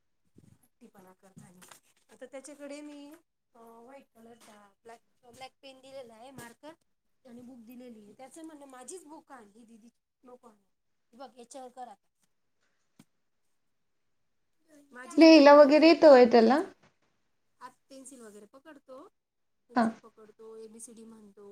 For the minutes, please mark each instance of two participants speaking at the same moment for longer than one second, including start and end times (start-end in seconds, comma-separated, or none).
15.2-16.6